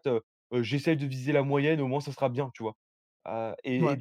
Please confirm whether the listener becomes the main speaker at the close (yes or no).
no